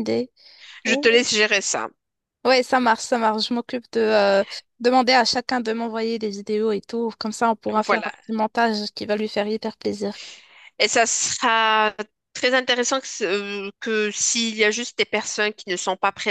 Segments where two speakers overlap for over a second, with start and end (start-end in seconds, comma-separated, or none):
none